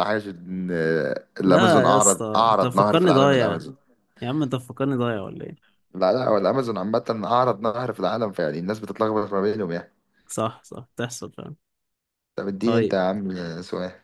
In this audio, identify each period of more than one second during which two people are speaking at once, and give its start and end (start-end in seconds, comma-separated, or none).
1.4-3.6